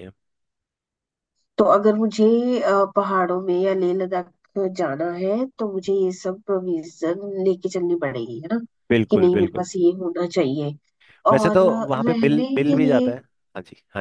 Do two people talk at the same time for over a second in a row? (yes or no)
yes